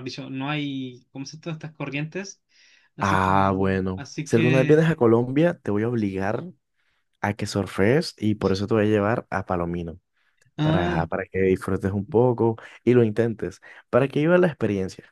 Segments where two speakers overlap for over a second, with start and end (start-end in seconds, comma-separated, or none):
3.0-4.9